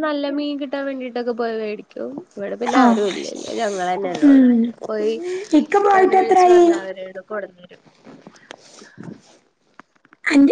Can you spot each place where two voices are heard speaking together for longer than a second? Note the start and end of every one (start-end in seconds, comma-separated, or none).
none